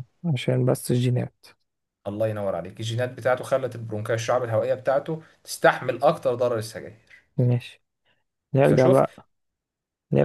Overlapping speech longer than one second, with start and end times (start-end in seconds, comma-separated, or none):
none